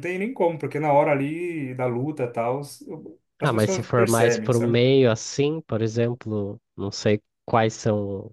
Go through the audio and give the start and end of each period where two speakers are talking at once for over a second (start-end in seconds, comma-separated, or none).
3.4-4.8